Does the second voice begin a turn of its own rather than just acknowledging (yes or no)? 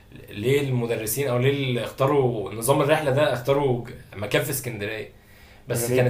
no